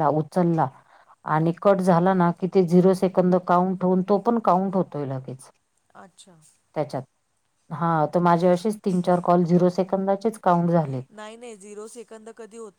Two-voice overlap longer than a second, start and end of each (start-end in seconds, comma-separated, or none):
none